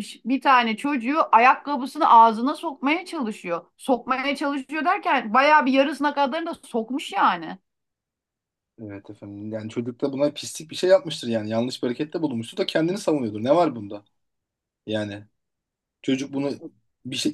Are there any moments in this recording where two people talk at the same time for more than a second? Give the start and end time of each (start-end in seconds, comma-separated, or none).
none